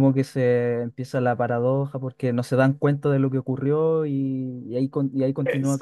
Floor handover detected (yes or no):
no